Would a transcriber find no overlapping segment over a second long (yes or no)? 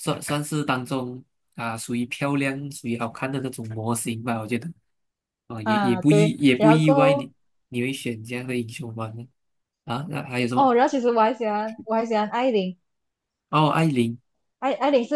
no